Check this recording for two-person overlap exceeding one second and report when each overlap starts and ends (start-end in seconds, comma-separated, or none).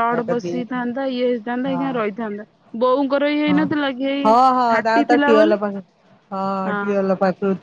none